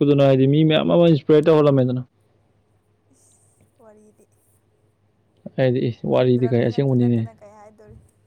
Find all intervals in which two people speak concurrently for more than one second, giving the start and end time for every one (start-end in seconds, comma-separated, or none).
6.1-7.3